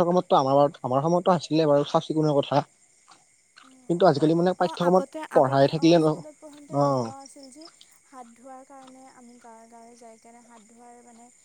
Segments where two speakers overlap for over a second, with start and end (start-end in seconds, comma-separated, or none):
4.6-6.6